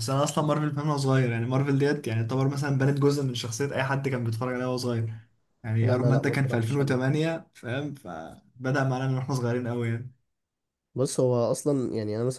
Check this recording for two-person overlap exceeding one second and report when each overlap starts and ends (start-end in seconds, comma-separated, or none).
5.8-7.2